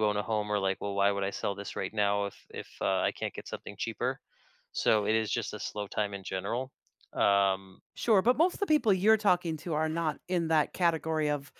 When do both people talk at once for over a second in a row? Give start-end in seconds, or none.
none